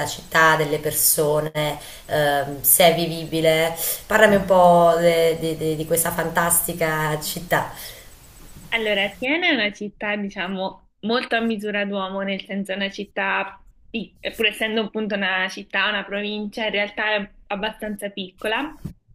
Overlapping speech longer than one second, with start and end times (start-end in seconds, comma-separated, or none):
none